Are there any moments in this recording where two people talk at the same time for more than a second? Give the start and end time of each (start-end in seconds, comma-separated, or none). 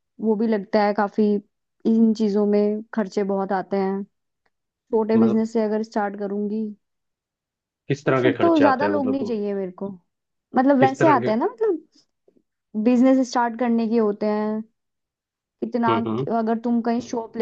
8.1-9.4